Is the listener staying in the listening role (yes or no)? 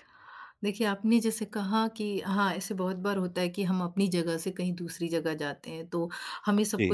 yes